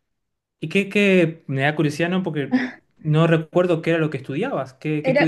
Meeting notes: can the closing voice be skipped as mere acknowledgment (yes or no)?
no